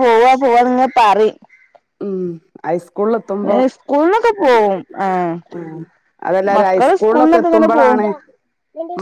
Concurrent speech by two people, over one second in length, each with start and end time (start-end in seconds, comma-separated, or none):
6.5-8.0